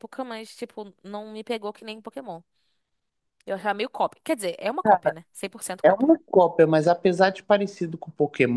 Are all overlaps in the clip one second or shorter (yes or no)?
yes